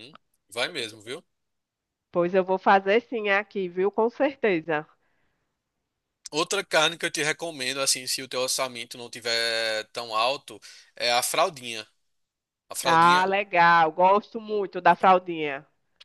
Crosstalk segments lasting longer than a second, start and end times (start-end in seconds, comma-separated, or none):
none